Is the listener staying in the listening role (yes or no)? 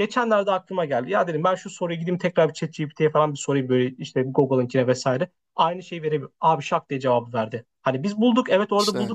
yes